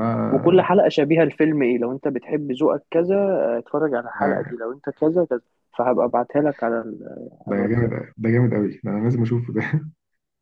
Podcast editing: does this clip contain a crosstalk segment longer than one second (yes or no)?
no